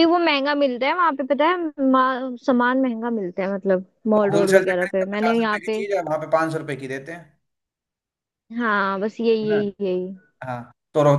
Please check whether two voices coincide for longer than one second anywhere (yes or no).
yes